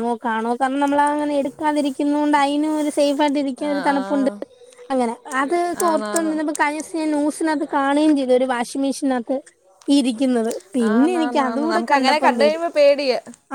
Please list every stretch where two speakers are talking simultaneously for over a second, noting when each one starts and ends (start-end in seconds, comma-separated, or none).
10.9-12.6